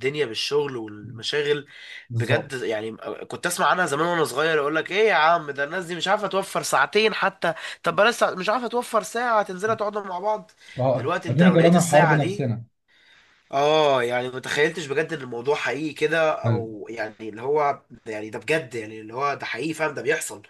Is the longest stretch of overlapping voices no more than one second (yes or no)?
no